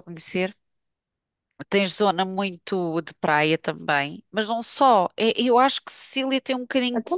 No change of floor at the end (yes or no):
no